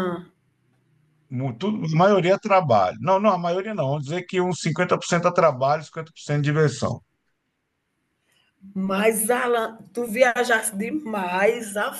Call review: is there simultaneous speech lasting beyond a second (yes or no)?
no